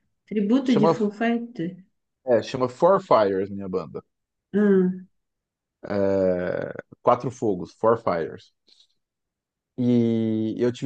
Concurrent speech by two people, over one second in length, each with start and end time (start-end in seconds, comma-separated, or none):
none